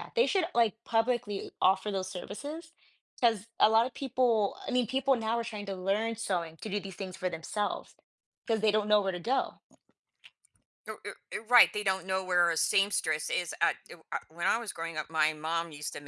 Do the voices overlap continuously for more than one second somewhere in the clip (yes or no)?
no